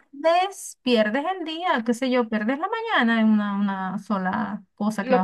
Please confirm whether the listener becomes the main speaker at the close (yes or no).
yes